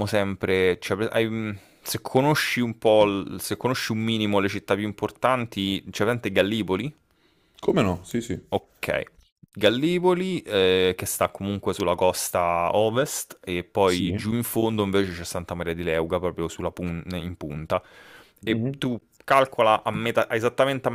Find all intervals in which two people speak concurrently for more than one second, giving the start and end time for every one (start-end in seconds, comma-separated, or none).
none